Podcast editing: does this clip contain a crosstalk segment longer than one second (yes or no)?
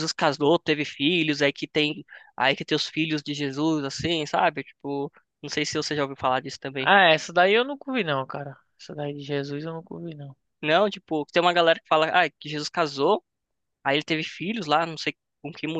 no